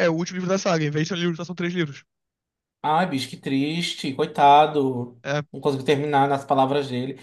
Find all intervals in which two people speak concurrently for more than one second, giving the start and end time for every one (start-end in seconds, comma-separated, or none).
none